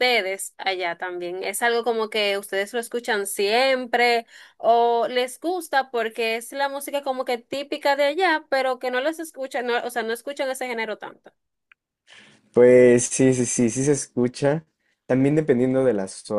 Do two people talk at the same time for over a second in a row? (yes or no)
no